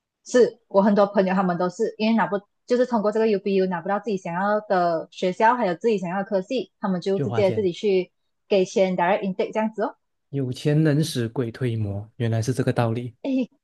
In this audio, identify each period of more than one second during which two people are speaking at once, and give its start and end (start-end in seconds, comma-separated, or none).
none